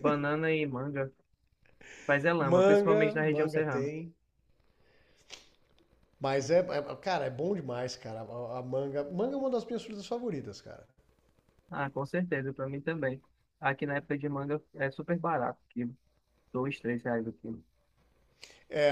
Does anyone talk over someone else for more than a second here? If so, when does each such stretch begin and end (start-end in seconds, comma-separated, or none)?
2.4-3.9